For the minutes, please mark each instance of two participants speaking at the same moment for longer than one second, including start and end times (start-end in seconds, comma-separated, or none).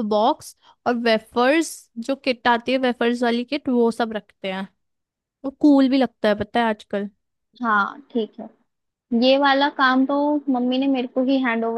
none